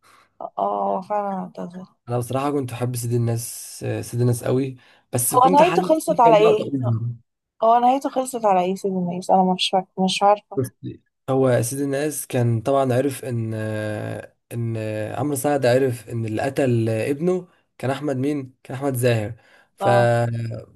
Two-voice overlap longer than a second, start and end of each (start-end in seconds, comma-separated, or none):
5.3-6.6